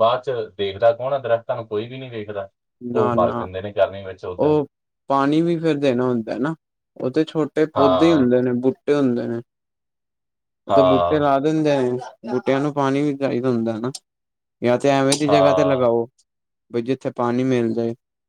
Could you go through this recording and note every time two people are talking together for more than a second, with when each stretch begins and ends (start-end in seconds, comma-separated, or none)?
none